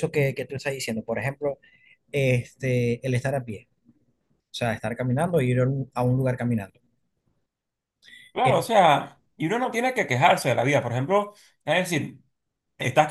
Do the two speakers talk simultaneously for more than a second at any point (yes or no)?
no